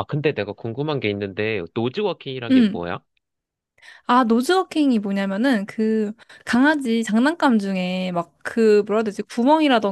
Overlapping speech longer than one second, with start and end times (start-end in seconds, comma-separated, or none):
none